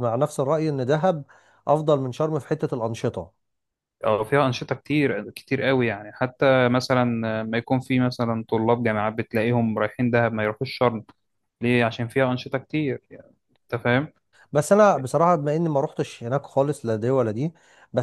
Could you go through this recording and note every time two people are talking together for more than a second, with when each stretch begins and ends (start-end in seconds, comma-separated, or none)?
none